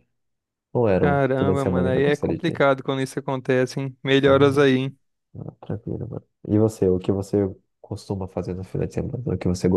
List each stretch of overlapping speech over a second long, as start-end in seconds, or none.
1.0-2.6